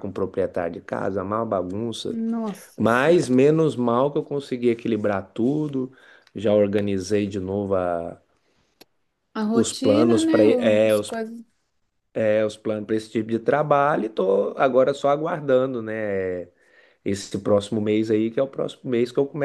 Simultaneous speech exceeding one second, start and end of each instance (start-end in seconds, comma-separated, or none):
9.6-11.1